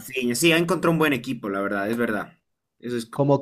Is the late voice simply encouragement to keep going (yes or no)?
no